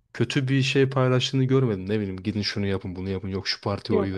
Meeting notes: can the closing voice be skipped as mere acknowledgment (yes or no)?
yes